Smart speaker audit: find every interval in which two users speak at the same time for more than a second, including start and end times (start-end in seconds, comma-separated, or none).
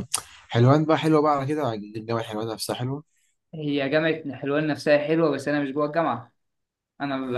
none